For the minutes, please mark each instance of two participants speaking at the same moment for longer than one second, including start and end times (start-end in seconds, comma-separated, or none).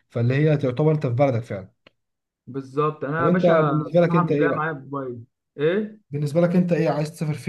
3.2-4.7